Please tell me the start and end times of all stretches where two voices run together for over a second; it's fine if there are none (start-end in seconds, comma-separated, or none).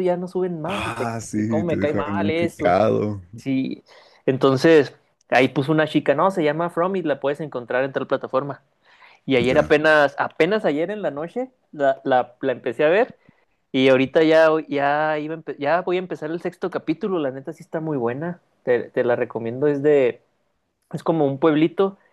0.6-2.7